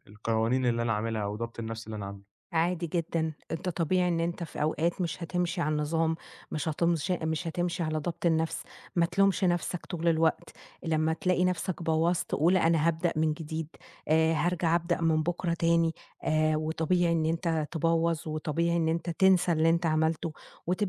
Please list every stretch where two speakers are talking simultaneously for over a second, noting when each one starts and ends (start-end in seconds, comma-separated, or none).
none